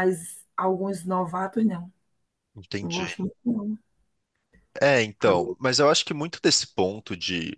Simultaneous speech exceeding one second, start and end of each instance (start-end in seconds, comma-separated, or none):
none